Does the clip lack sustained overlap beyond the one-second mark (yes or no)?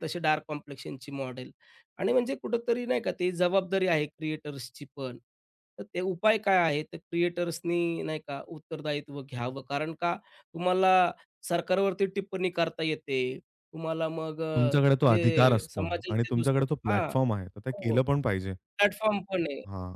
no